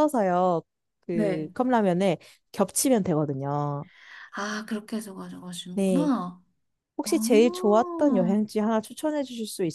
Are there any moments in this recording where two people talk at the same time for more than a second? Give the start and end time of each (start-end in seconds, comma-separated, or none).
7.0-8.4